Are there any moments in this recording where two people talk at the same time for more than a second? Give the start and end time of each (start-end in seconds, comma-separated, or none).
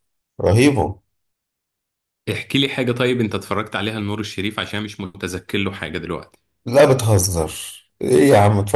none